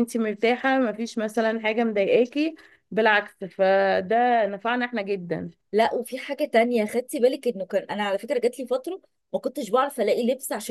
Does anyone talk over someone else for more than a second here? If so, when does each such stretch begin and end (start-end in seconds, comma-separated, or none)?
none